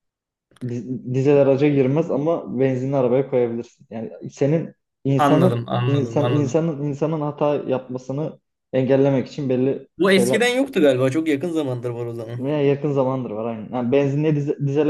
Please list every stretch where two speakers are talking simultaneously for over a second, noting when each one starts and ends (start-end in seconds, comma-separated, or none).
5.2-6.7